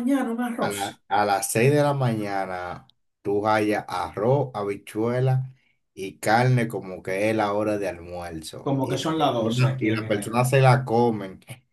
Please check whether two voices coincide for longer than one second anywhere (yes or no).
yes